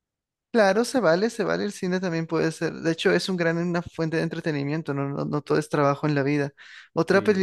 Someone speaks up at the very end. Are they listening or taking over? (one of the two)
listening